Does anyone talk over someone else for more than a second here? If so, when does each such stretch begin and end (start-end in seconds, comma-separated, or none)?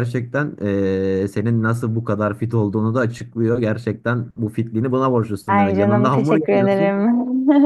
5.5-6.9